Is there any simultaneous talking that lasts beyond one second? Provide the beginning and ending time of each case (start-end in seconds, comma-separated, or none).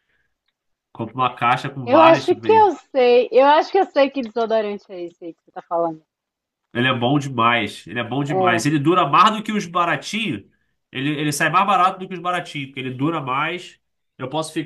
none